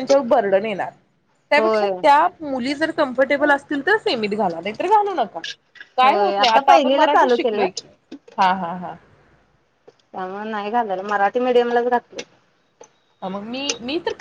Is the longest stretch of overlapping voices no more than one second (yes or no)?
no